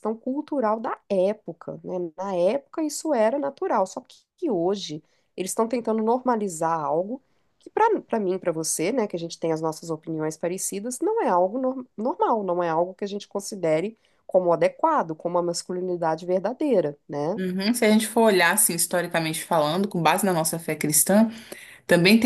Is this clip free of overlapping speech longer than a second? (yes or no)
yes